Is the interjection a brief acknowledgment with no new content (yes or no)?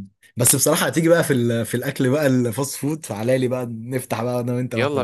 no